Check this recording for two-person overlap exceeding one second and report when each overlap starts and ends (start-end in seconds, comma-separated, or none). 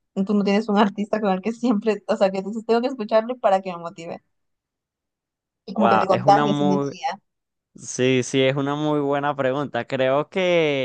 5.7-6.9